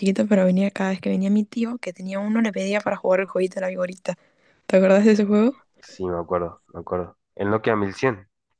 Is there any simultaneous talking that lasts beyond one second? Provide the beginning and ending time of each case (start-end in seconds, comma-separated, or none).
none